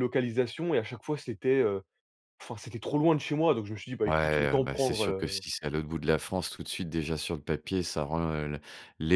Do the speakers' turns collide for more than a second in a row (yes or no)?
yes